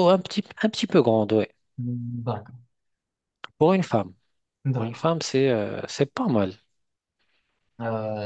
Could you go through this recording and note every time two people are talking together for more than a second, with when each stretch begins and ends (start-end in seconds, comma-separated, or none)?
none